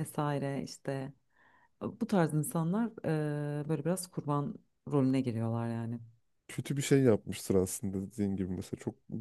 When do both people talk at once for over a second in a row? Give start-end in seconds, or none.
none